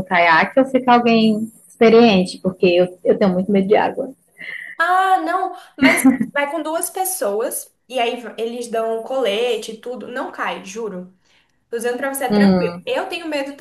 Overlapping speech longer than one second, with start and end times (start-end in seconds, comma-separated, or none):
none